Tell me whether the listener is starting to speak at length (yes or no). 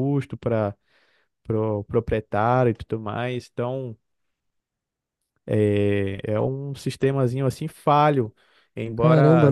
yes